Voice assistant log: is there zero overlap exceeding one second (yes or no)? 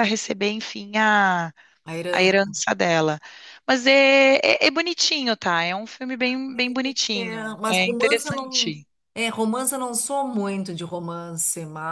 no